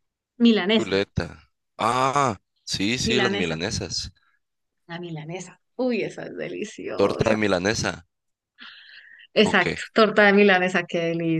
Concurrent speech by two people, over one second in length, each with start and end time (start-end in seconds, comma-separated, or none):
none